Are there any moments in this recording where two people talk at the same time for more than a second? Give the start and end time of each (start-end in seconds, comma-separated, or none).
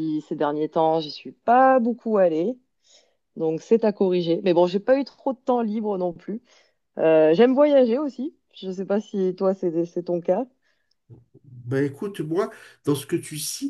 none